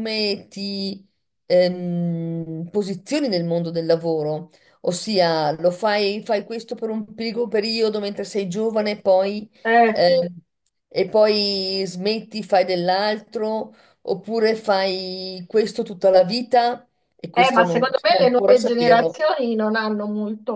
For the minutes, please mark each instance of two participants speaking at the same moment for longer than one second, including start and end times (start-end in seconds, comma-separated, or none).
17.3-19.2